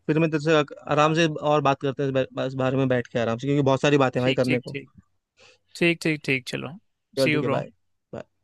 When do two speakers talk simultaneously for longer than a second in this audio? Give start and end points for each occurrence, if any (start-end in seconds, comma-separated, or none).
none